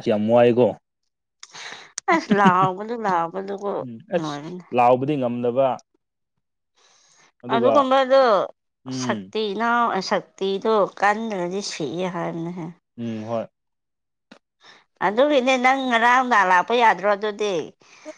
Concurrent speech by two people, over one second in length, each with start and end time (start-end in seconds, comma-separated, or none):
none